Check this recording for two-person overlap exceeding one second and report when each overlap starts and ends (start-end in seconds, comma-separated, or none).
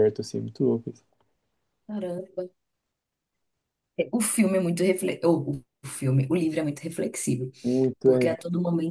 none